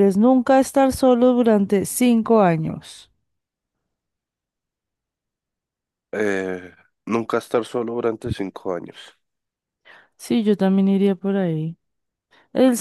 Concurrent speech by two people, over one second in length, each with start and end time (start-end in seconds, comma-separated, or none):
none